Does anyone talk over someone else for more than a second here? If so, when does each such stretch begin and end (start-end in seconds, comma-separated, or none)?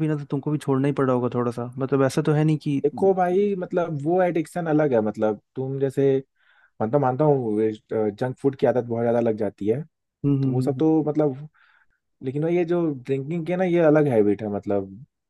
none